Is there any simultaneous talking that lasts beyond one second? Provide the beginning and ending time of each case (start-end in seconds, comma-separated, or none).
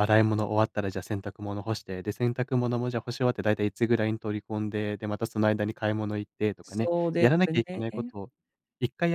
6.6-8.1